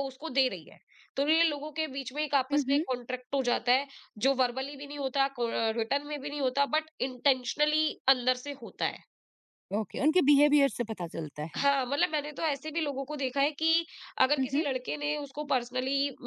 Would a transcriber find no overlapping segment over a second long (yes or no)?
yes